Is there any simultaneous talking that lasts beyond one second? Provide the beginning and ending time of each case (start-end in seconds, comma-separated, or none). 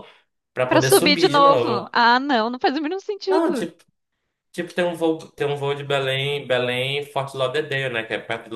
0.7-1.9